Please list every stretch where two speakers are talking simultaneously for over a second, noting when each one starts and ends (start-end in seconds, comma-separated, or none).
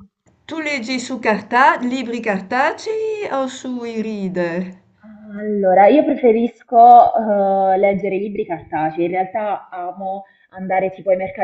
none